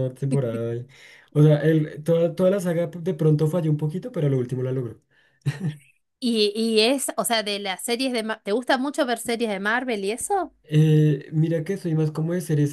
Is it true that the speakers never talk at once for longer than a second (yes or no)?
yes